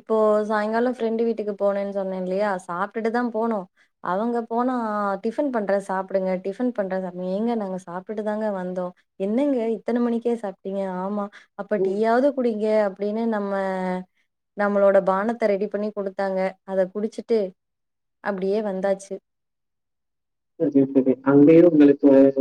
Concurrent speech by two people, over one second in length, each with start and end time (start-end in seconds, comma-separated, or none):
none